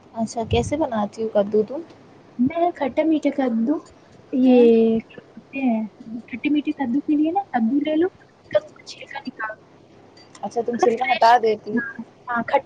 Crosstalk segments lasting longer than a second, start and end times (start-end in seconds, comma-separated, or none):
none